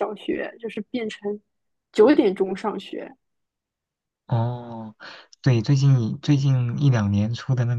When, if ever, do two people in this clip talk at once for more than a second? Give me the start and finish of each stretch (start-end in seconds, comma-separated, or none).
none